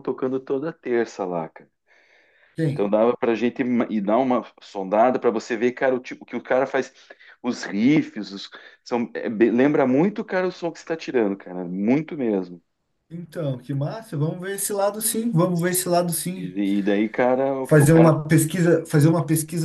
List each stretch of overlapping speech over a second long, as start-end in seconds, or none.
none